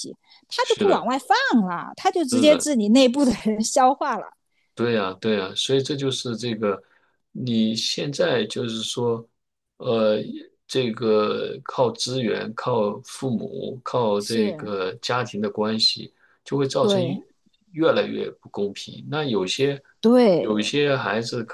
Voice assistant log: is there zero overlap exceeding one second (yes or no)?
yes